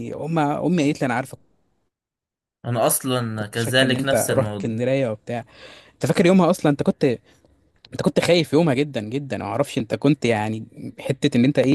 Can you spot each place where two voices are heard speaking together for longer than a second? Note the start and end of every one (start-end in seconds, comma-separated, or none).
3.4-4.7